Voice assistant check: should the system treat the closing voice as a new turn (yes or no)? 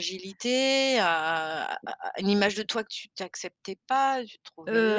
yes